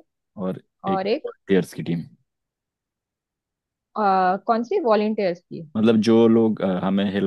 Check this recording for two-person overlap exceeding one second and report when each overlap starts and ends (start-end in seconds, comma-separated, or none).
none